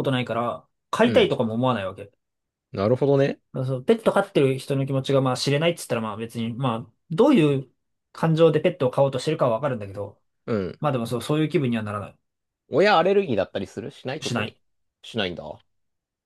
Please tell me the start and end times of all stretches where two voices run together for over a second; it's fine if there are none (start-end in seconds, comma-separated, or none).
none